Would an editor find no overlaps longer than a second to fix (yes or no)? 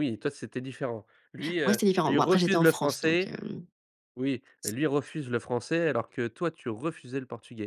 no